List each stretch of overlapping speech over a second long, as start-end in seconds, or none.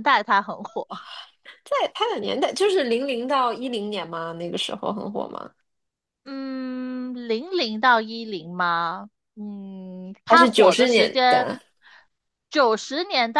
10.2-11.5